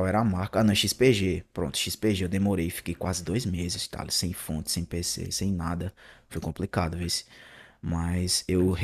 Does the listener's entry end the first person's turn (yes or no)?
no